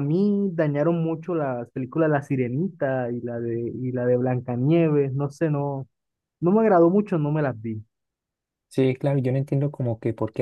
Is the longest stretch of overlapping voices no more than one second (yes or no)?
yes